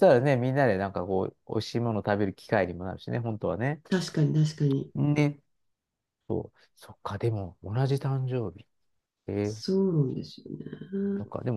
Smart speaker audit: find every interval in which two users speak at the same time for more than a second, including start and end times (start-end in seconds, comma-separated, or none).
none